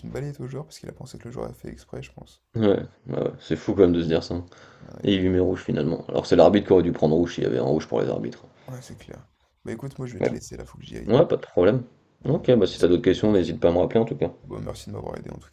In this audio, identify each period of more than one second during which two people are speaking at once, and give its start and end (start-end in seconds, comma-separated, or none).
12.2-13.5